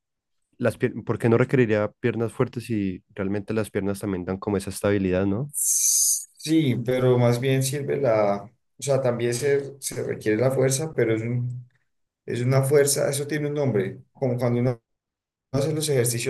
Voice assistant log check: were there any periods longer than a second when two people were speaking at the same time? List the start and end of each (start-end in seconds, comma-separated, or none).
none